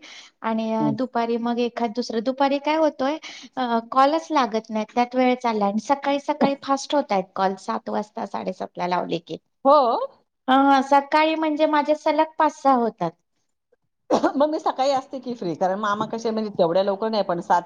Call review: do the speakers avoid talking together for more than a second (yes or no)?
yes